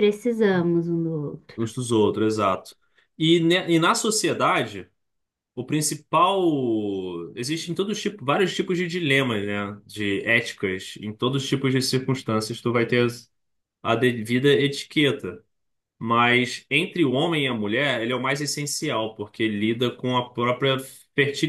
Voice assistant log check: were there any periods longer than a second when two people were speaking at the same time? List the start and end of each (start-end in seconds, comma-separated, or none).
none